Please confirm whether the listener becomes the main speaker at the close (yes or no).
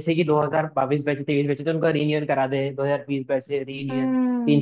yes